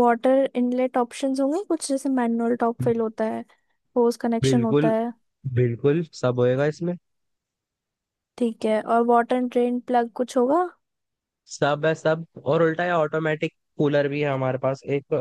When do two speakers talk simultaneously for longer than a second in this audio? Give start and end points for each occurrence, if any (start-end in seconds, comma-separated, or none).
none